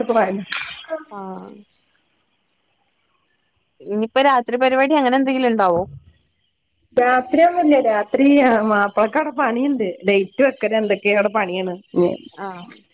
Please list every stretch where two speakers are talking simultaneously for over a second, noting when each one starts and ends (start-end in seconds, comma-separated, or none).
none